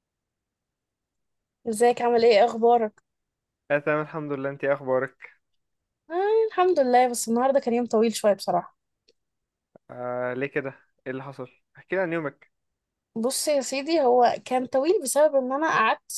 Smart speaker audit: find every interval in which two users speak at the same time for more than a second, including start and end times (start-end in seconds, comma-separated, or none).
none